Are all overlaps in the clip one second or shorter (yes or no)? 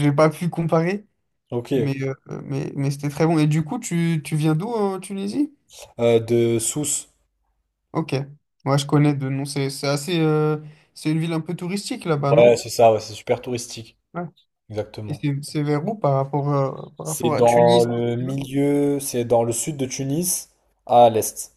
no